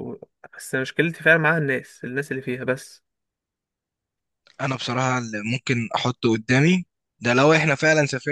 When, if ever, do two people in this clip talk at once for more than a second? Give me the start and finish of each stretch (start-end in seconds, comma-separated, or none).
none